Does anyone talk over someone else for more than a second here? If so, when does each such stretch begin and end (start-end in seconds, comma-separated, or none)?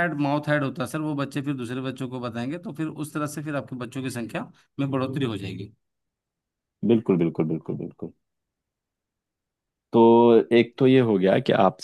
none